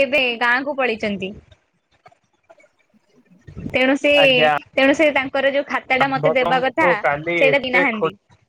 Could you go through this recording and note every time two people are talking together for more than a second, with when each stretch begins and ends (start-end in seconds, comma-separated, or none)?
6.0-7.8